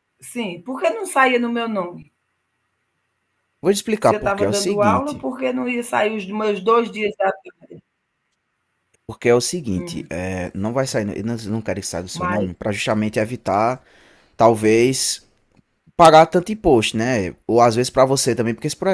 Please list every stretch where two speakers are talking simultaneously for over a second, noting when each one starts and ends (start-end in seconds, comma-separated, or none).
4.0-5.3